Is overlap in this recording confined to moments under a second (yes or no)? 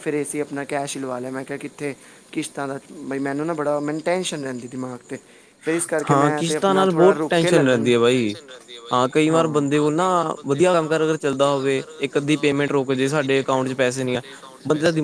no